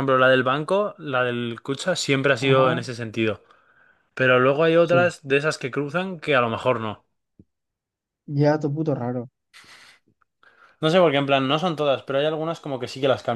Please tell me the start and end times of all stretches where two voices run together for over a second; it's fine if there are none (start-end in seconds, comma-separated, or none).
none